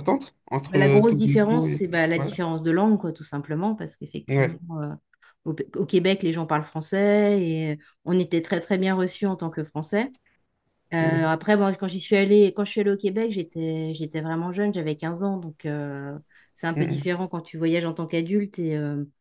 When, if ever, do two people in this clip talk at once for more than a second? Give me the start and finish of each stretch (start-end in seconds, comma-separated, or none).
0.7-2.3